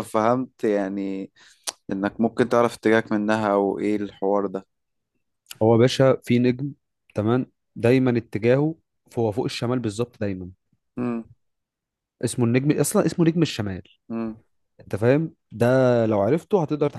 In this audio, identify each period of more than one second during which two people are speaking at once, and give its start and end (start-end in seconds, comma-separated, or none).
none